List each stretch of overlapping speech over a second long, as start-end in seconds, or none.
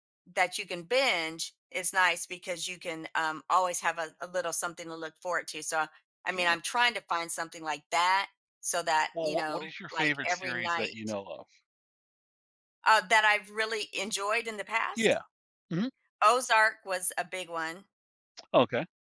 9.1-11.2